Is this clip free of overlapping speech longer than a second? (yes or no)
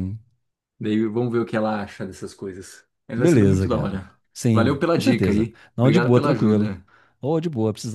no